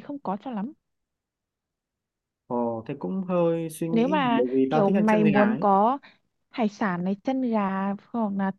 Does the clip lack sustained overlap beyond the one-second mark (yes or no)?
no